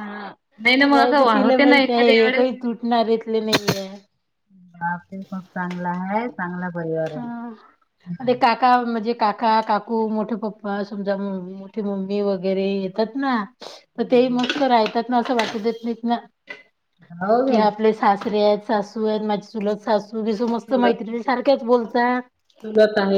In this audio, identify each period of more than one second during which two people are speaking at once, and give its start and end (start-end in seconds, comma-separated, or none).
none